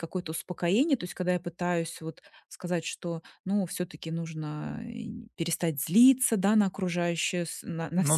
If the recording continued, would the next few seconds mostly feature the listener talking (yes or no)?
no